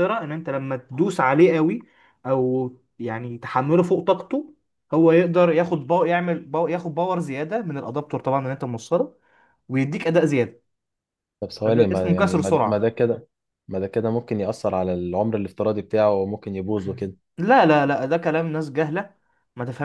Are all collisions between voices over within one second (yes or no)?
no